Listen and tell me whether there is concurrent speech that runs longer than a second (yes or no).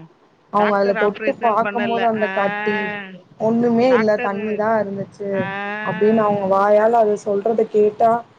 yes